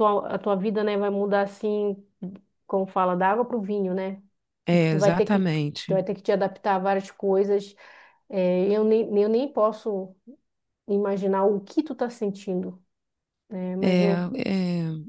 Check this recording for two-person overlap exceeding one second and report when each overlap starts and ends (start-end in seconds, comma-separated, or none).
4.7-6.0